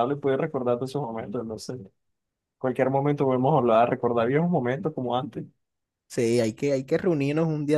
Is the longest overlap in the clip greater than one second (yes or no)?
no